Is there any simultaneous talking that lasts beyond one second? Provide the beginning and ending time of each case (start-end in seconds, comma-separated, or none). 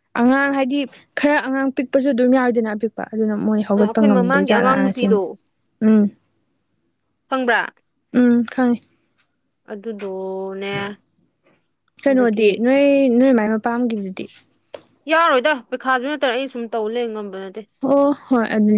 3.8-5.2